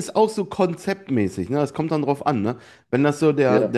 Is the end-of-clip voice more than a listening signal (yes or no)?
no